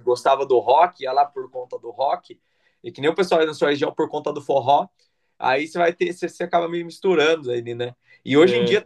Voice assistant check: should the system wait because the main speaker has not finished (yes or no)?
yes